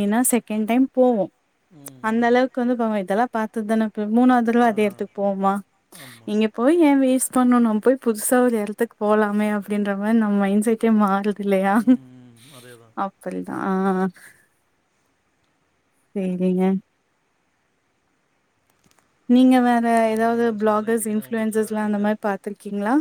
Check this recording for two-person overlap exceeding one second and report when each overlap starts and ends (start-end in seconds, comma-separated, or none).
20.0-22.1